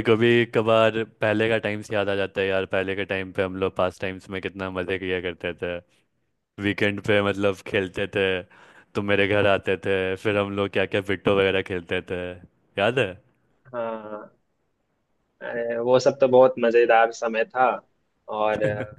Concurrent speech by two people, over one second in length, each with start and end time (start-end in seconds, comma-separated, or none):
none